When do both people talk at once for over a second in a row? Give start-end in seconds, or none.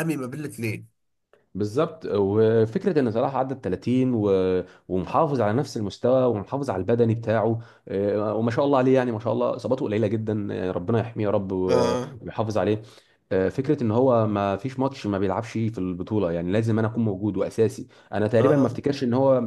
none